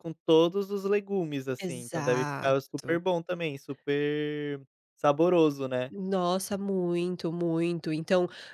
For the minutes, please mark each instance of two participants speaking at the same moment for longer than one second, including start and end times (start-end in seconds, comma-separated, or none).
1.6-3.0